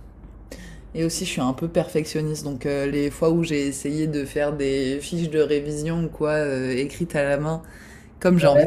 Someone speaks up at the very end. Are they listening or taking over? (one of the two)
listening